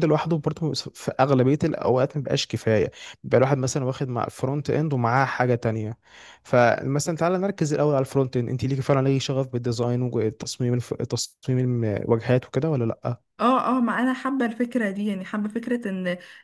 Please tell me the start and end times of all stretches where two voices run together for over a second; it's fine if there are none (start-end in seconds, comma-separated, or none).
none